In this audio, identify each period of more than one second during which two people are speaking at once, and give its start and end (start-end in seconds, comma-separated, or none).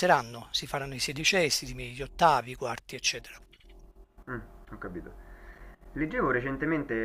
none